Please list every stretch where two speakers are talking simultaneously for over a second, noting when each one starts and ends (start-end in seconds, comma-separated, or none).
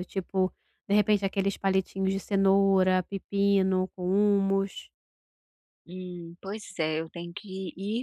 none